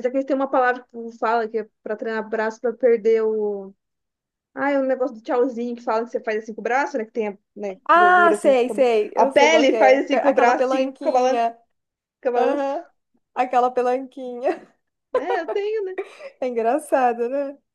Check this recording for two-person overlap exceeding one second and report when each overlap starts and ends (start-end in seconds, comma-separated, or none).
7.8-11.4